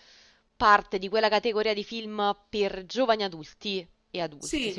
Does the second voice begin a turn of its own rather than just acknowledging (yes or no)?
yes